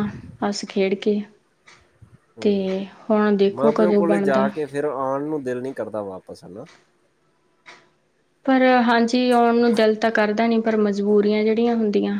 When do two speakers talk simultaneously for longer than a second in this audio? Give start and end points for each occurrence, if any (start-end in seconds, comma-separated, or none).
none